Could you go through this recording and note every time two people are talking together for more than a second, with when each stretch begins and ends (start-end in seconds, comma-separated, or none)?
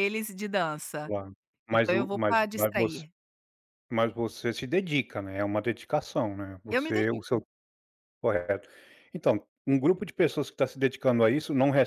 1.7-3.0